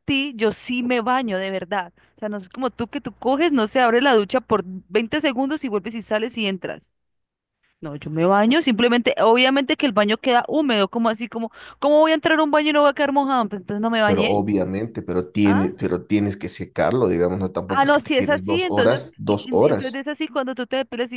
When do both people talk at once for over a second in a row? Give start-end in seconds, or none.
17.7-20.0